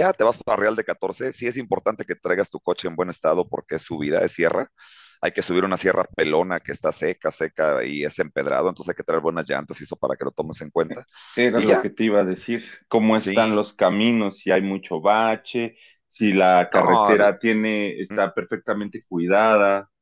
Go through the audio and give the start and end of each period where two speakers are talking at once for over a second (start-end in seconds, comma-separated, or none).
none